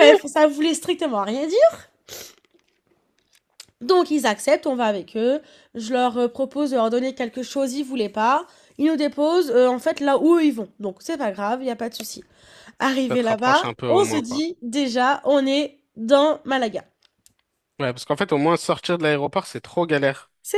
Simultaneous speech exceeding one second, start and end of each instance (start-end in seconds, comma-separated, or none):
13.1-14.4